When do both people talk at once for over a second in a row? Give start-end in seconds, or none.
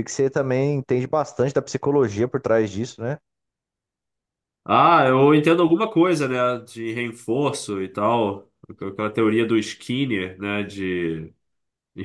none